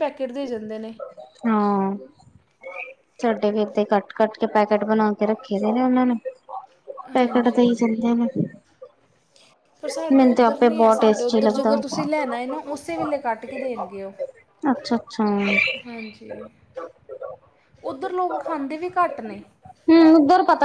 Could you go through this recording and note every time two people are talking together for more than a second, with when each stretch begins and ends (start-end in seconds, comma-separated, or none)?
10.1-11.7